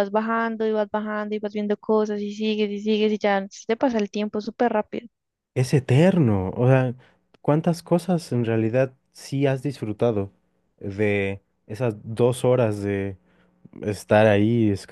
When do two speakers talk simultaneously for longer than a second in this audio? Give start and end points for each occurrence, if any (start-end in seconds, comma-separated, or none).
none